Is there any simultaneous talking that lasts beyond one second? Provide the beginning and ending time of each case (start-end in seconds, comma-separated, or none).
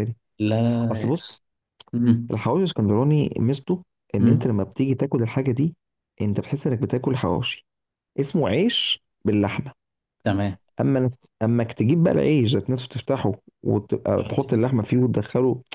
none